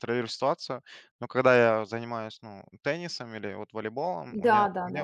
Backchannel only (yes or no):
yes